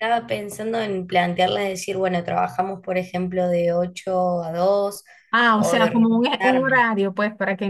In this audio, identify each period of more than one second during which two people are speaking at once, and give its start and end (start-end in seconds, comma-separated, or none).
5.5-6.9